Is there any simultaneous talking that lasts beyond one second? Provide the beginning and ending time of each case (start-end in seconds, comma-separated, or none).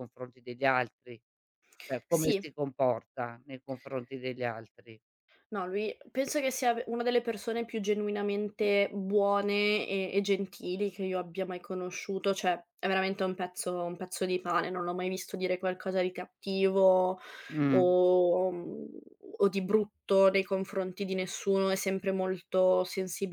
none